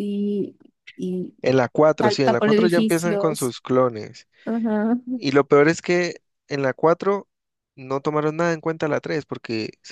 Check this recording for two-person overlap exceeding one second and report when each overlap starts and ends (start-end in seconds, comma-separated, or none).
2.0-3.5